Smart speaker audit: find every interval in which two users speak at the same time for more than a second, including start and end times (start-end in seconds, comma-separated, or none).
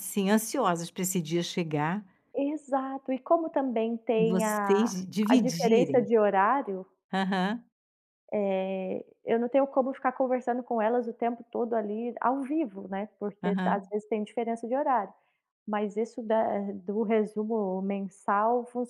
4.2-6.1